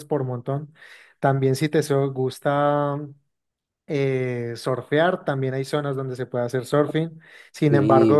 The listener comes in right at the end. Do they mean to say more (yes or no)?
no